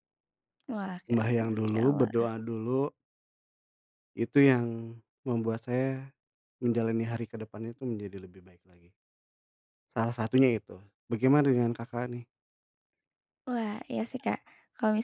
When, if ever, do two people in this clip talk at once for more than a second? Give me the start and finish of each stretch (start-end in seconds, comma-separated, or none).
1.1-2.3